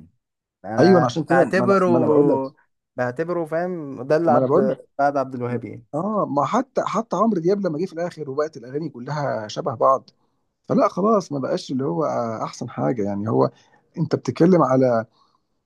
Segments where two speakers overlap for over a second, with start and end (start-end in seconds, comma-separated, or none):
0.8-2.4